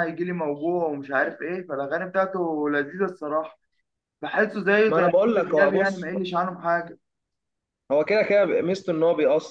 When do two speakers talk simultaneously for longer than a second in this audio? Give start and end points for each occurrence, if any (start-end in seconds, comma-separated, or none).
4.9-6.1